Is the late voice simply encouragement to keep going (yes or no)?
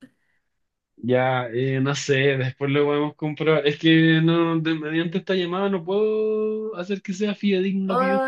no